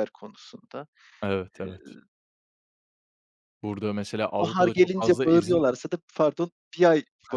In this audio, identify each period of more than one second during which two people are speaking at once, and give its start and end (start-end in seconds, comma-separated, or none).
4.4-5.6